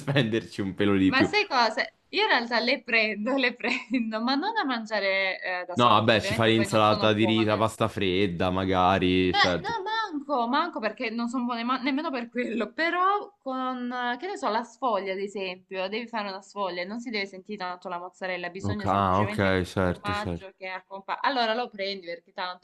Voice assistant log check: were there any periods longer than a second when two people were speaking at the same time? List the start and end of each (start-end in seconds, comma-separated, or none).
5.7-7.6, 18.6-20.5